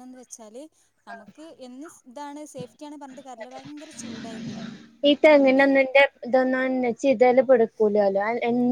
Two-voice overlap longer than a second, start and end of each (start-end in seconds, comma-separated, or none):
none